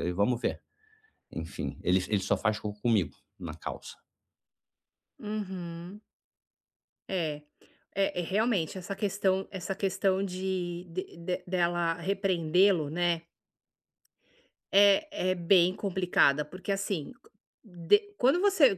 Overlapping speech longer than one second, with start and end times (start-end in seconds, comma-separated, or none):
none